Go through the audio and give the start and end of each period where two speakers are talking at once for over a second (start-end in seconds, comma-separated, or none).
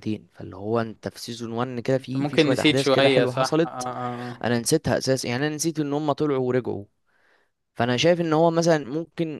2.0-3.9